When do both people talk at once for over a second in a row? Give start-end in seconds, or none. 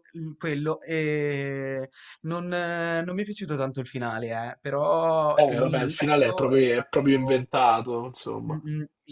5.3-7.5